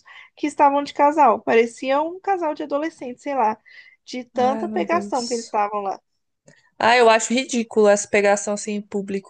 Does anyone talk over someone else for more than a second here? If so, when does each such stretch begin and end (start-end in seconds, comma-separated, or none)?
4.3-5.6